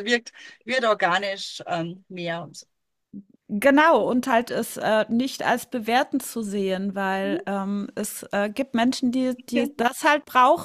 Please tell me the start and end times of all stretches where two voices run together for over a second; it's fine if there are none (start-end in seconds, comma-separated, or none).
none